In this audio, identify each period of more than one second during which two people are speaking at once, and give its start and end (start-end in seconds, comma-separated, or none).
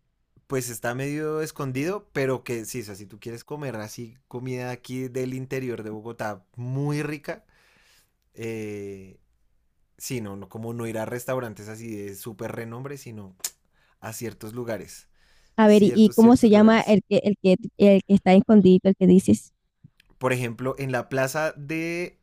15.6-17.0